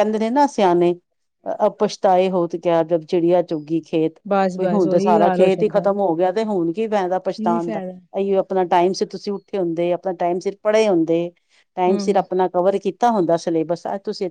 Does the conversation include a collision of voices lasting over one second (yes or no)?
yes